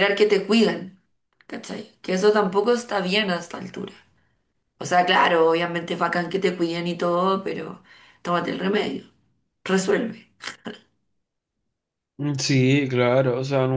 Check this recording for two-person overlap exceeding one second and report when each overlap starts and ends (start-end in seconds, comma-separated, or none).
none